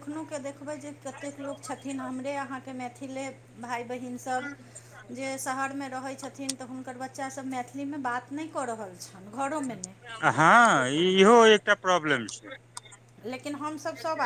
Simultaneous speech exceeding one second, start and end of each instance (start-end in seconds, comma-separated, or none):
none